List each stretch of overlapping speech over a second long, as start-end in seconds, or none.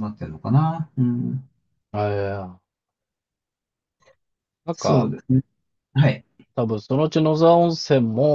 none